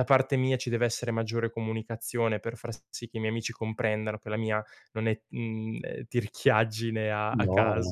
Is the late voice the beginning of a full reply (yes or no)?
yes